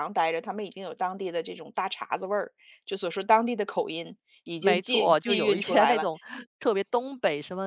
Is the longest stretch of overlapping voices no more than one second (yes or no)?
no